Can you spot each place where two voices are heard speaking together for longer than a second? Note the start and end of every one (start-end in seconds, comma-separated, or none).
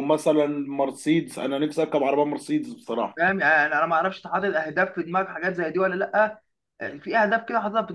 none